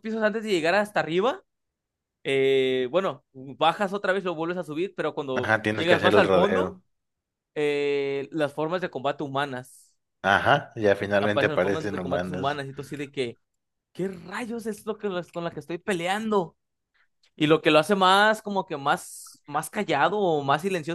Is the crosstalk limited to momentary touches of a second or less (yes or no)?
no